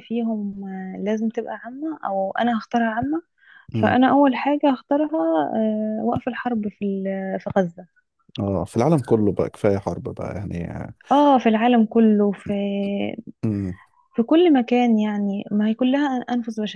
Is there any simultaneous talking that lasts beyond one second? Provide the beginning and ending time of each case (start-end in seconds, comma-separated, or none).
none